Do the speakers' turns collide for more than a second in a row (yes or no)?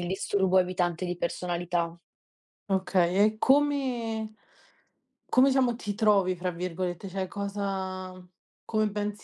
no